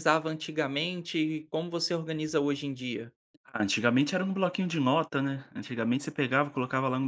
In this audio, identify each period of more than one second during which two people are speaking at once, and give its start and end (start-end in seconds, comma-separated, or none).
none